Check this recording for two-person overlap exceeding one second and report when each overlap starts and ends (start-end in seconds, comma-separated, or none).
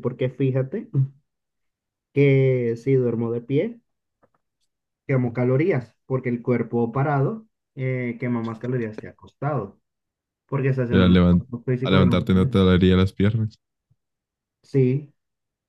10.9-12.5